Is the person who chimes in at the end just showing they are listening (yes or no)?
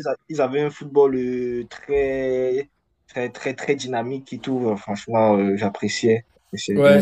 no